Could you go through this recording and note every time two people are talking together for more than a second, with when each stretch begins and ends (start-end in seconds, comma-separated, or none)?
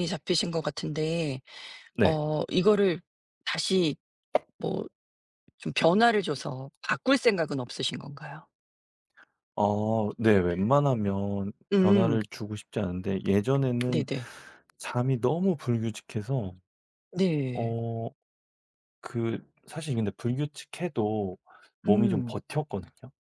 none